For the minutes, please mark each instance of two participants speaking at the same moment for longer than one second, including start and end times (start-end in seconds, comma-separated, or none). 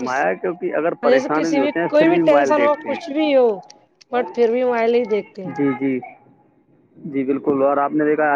1.1-3.4